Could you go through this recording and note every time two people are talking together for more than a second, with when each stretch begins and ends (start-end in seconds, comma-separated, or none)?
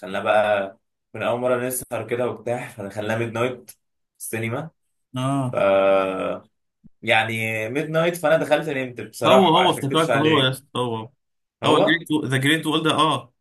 9.2-10.6